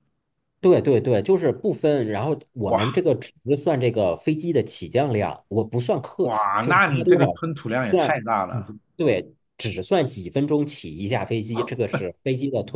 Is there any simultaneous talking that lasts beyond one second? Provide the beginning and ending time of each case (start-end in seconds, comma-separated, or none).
6.2-8.7